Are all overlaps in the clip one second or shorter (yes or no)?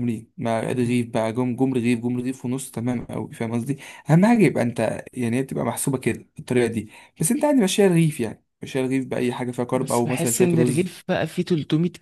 no